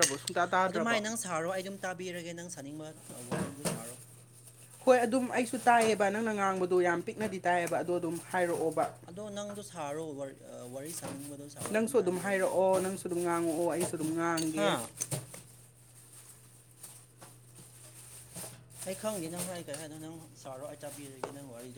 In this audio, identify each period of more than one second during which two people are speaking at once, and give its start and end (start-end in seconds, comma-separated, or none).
none